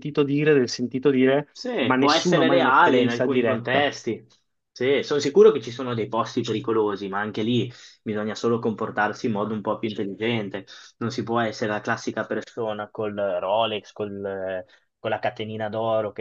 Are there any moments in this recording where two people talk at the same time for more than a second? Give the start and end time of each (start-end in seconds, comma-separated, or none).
1.5-3.9